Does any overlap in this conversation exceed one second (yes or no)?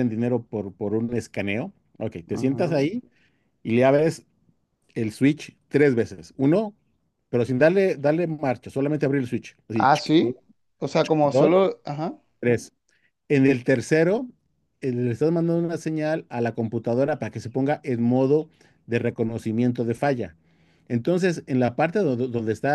no